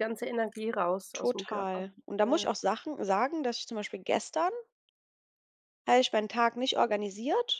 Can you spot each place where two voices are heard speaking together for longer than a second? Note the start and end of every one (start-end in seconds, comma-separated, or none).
1.1-2.5